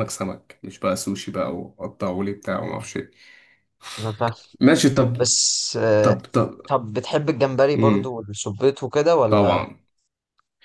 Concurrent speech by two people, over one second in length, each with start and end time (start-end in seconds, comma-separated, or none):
none